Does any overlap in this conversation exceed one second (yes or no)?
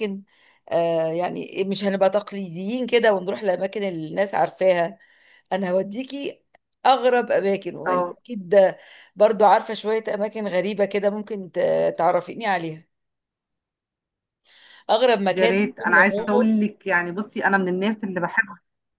yes